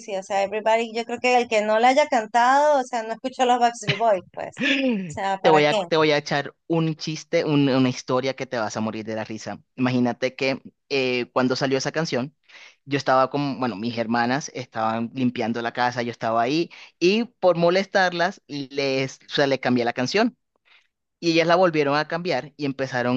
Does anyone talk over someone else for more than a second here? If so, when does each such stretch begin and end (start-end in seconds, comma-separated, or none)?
none